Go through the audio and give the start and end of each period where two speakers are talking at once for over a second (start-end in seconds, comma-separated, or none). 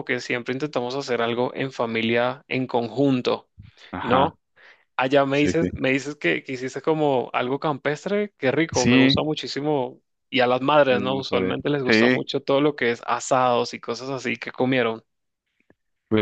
10.9-12.3